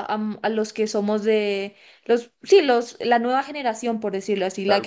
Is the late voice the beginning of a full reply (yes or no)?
yes